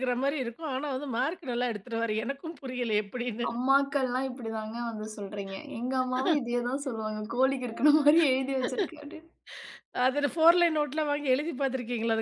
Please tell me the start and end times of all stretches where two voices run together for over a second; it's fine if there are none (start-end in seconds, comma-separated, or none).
none